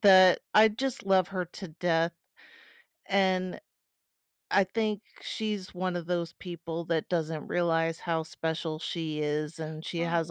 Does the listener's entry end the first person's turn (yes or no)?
no